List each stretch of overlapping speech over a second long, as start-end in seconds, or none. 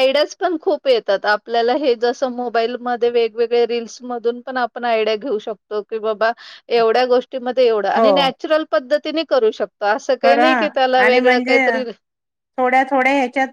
none